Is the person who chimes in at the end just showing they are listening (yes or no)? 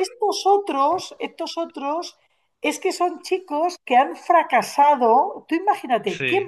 yes